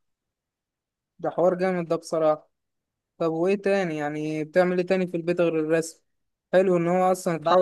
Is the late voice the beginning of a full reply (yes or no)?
no